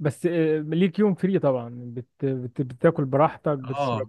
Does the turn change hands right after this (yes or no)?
yes